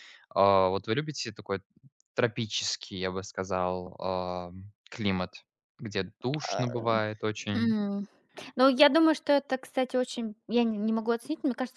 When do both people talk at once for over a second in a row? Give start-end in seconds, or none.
none